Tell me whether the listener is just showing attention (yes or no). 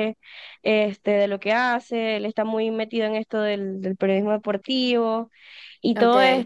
yes